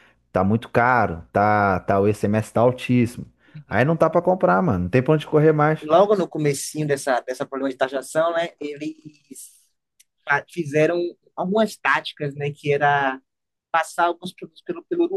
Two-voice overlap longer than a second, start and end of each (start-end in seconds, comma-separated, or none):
none